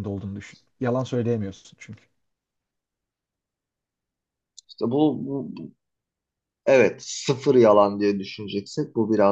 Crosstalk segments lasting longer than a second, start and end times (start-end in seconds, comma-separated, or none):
none